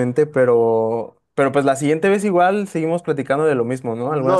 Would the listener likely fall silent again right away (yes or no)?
no